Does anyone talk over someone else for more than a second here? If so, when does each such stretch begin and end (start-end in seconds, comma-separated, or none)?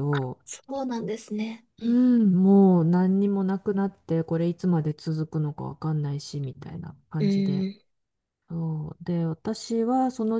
none